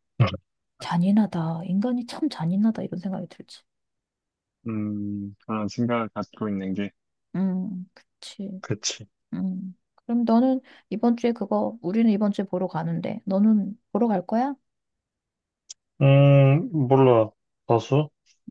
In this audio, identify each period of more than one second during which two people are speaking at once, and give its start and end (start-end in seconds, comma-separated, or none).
none